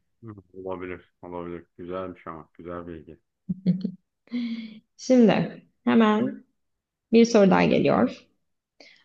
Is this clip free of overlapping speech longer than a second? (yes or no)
yes